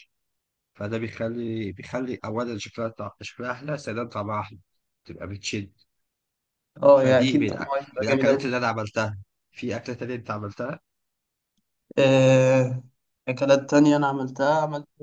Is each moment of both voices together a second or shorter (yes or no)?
no